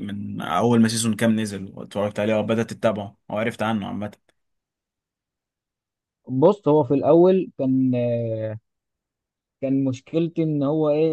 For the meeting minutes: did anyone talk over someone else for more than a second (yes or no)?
no